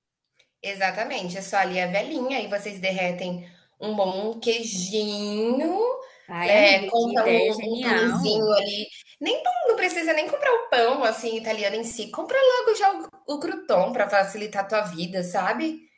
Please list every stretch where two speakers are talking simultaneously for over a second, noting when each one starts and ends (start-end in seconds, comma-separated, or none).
6.5-8.5